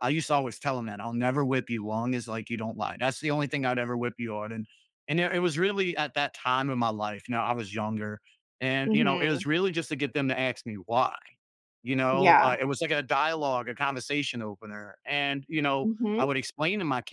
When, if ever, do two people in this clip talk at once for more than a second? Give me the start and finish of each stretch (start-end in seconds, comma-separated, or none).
none